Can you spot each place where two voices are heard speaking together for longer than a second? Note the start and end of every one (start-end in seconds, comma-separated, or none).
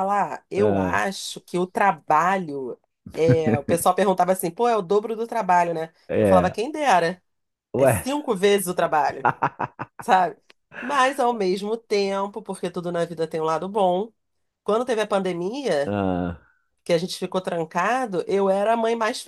none